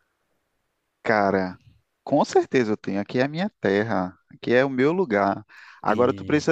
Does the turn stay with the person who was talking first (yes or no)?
yes